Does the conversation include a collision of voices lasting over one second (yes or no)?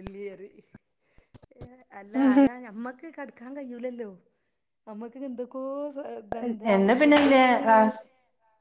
no